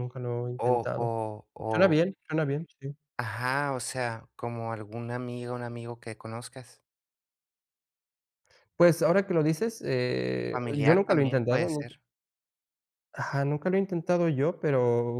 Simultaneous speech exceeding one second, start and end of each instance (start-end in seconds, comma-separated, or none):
10.5-11.9